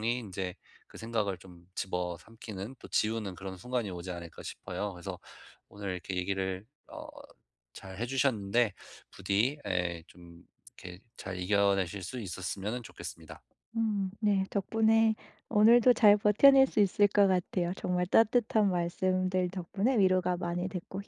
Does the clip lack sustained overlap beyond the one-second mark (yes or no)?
yes